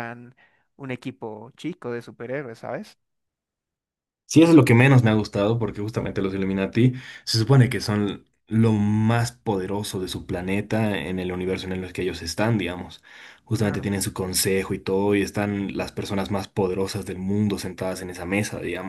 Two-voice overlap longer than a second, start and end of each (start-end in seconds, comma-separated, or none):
none